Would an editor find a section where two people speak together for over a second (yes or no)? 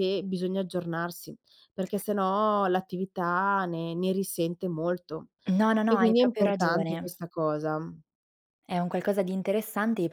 yes